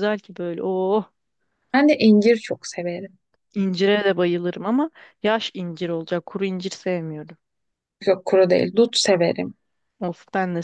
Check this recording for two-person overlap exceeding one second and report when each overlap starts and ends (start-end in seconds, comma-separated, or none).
none